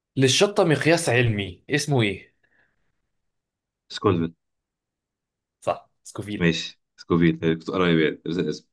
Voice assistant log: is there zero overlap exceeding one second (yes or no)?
yes